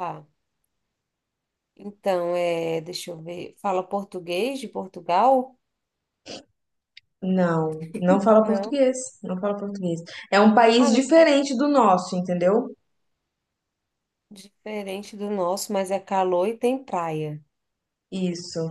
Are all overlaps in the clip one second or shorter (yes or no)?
yes